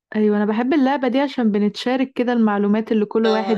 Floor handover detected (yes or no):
yes